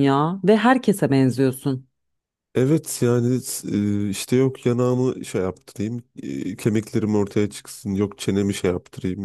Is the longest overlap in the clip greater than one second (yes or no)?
no